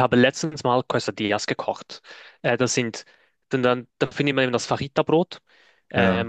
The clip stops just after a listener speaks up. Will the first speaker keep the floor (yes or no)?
yes